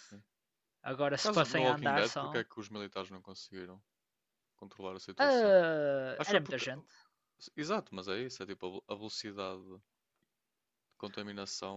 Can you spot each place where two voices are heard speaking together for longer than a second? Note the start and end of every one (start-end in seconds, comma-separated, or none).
1.2-2.4